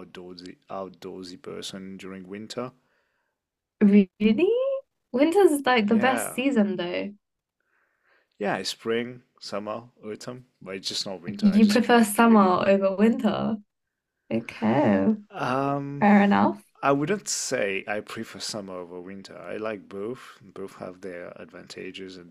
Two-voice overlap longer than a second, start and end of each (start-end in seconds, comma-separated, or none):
11.3-12.5